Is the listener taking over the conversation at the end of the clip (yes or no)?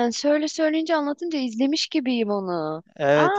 yes